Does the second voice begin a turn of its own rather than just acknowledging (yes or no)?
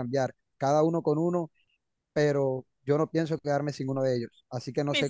yes